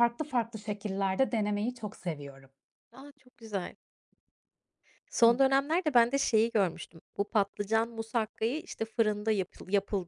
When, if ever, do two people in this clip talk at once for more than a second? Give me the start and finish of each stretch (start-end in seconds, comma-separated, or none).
none